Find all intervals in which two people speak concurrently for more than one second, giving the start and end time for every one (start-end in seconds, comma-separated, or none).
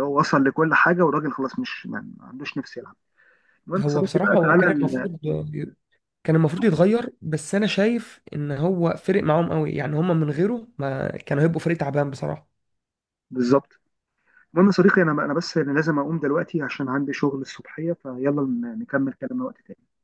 3.8-5.1